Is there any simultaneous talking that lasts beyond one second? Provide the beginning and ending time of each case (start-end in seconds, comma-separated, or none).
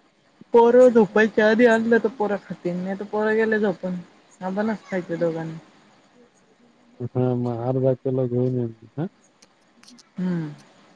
none